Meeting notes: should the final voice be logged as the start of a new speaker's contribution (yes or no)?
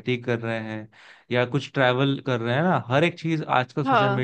no